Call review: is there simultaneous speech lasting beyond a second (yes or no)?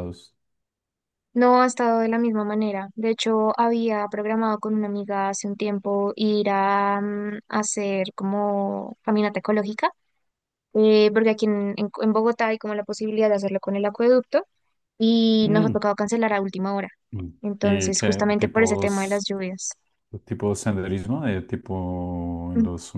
yes